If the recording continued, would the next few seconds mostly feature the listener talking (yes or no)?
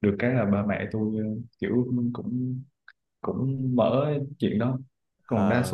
no